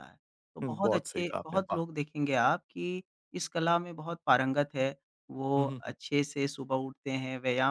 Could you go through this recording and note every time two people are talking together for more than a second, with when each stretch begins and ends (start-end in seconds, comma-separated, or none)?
0.6-1.8